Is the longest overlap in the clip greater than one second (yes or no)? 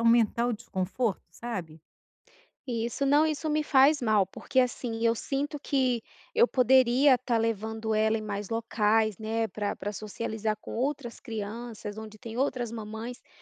no